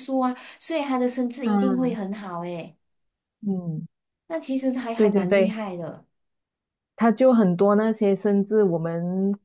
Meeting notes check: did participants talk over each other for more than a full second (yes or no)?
no